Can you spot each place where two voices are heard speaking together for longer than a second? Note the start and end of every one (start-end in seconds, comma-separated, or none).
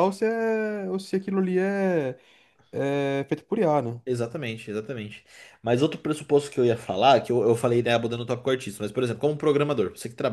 none